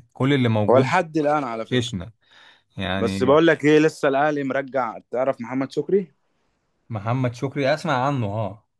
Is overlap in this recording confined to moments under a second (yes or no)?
yes